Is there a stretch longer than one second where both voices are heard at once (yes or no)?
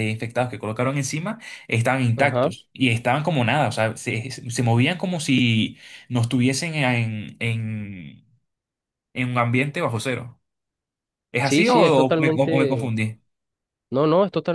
yes